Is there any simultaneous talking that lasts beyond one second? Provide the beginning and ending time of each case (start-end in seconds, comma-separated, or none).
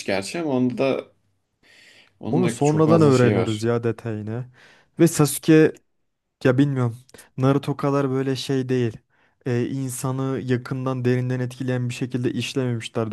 2.3-3.7